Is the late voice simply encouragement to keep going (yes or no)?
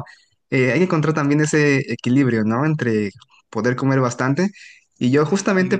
yes